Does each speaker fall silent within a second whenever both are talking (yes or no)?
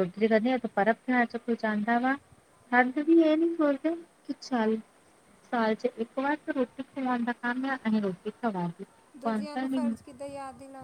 yes